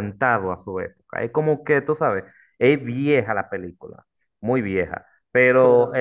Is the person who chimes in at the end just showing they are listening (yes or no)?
yes